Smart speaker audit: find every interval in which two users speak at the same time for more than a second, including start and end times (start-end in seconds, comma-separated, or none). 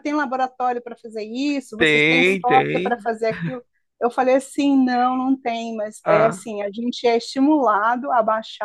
1.8-3.1